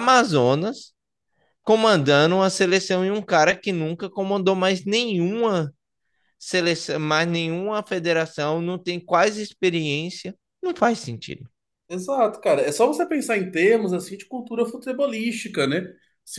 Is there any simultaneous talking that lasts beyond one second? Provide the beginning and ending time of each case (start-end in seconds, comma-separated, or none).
none